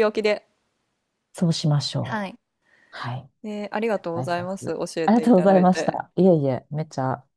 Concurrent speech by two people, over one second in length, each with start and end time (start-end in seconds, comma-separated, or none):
3.9-6.0